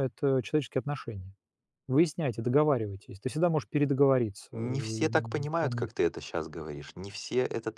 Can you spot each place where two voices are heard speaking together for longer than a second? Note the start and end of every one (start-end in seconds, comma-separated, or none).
4.5-5.9